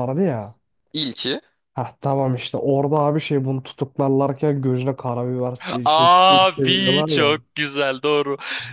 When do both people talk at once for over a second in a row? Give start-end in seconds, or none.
5.8-7.3